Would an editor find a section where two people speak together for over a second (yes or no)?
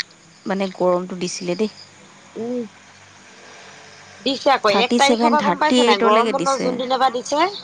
yes